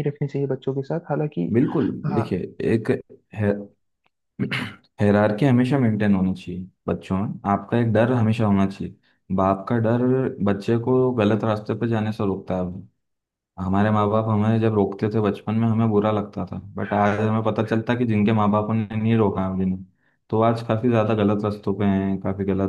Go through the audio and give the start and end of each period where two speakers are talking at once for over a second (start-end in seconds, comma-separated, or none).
none